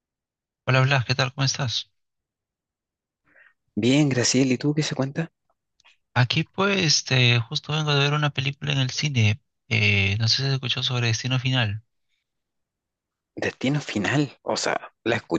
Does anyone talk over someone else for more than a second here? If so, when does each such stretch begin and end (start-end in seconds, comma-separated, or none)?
none